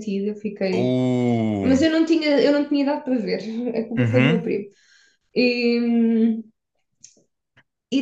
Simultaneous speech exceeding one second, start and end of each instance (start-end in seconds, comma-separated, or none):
none